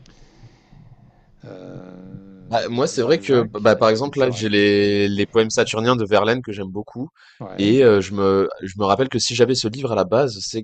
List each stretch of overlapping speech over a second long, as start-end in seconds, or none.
2.6-5.0